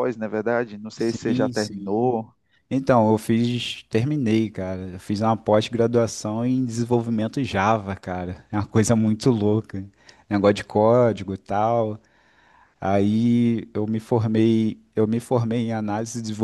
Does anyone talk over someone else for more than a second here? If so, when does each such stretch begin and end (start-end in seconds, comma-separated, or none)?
1.0-2.2